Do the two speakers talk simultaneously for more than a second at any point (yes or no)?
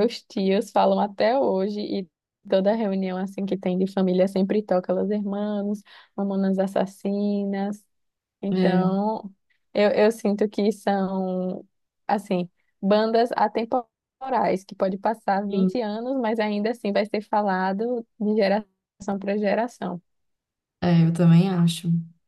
no